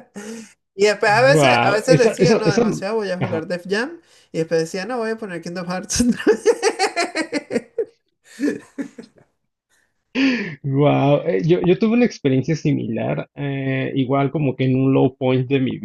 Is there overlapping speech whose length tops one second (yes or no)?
yes